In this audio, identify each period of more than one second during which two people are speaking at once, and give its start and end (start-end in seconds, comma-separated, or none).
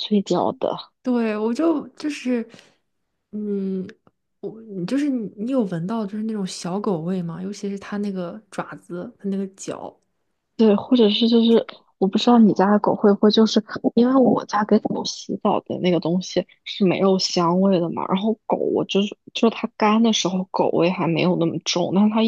none